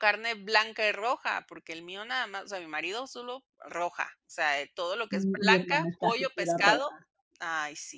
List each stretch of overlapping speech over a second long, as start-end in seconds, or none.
5.1-6.9